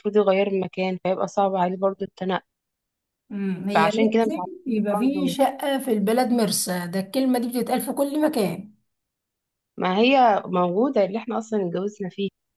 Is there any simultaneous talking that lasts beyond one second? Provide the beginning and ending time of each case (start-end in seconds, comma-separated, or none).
3.7-5.3